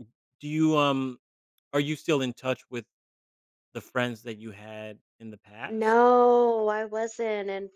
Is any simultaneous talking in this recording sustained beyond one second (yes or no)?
no